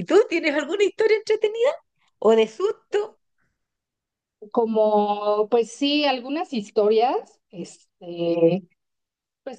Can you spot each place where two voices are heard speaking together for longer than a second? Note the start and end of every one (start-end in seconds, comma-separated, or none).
none